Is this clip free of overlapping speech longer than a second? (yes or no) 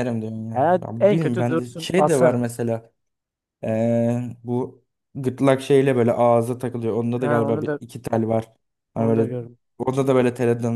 no